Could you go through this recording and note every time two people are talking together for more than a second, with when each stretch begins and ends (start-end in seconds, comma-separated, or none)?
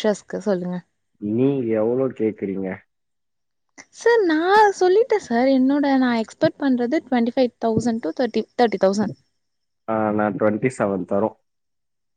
none